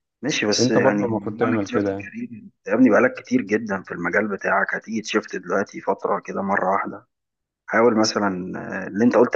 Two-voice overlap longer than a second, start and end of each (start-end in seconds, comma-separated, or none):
0.6-2.1